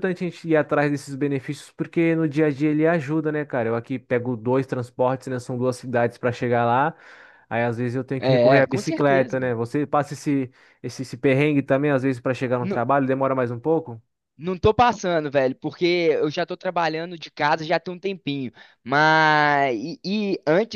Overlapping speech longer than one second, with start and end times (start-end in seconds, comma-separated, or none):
8.2-9.6